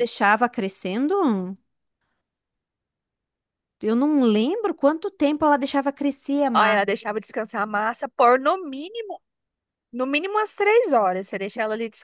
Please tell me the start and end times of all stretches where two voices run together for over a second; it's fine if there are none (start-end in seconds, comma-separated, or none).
none